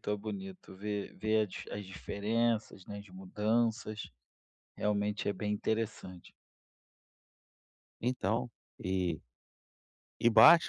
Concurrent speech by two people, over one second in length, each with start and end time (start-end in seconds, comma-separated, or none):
none